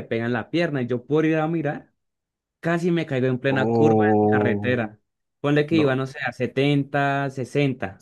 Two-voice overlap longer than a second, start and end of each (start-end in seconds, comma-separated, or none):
3.5-4.8